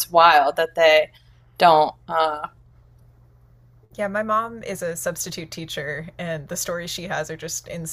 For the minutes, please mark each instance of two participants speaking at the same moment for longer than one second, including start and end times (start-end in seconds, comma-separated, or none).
none